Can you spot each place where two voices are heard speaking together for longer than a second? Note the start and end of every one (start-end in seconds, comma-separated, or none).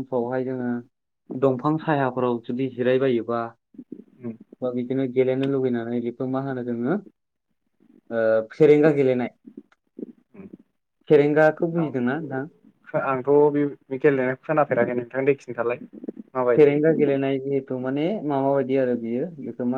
none